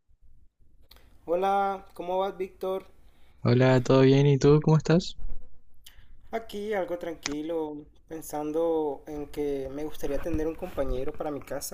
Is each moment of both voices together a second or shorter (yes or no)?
yes